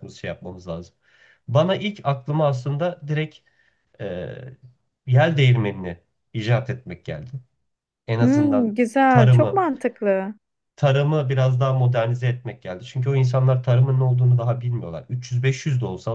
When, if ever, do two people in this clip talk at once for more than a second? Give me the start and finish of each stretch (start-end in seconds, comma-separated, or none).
8.2-9.7